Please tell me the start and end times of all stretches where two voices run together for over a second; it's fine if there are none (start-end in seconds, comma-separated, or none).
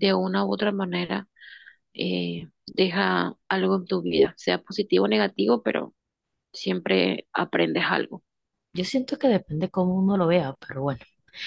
none